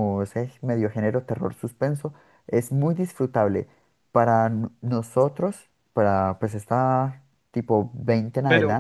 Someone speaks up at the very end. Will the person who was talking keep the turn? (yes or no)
yes